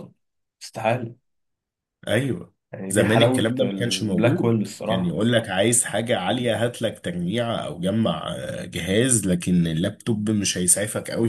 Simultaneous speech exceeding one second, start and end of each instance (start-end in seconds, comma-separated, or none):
2.9-5.2